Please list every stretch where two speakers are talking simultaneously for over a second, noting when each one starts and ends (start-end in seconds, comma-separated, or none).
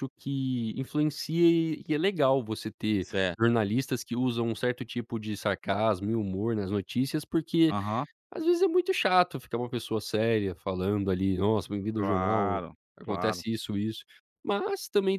11.9-13.4